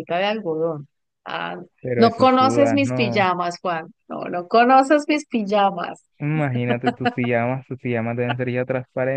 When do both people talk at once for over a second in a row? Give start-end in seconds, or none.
1.9-3.2